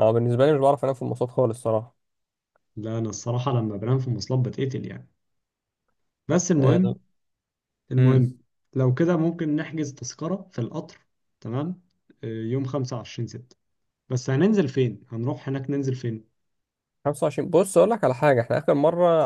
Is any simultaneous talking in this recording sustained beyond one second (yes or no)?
no